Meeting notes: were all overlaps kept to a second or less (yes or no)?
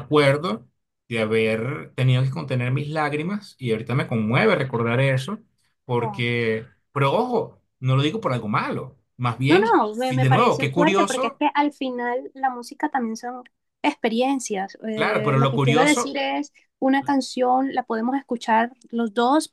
no